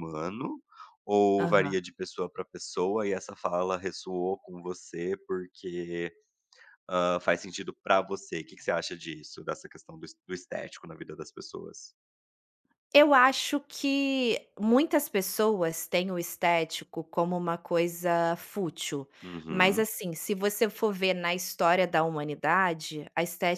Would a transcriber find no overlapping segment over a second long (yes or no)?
yes